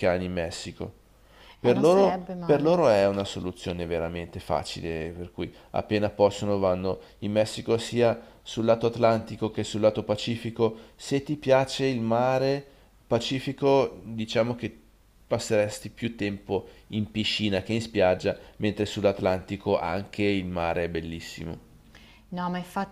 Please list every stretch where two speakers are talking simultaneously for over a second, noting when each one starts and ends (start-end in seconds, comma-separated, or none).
1.6-2.8